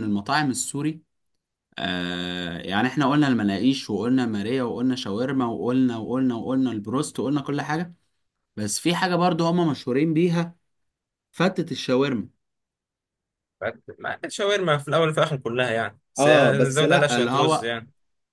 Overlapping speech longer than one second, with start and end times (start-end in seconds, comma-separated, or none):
16.2-17.7